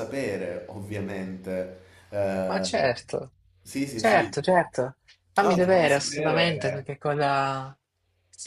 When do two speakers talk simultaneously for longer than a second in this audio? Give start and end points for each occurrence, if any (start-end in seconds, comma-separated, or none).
5.4-6.9